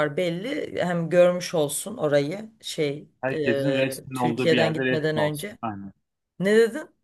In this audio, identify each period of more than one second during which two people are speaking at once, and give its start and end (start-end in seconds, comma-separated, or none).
3.2-5.6